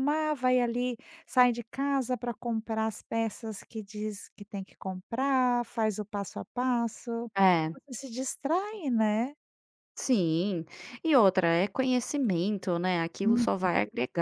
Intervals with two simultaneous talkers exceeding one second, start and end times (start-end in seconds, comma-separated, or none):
none